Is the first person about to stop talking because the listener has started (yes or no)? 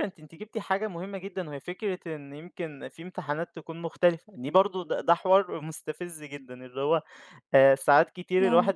no